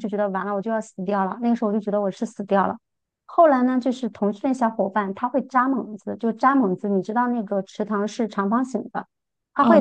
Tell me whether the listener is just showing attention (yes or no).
yes